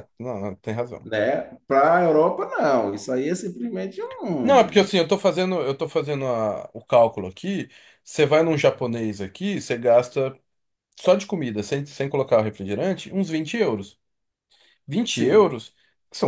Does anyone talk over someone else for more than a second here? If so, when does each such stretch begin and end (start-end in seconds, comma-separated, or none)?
none